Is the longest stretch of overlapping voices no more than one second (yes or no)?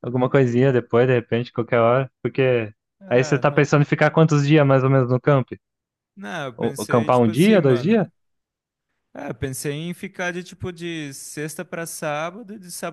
no